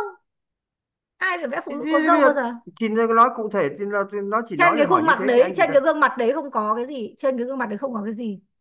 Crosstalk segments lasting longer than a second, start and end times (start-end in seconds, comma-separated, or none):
4.6-5.8